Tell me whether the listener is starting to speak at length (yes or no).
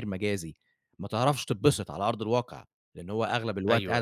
no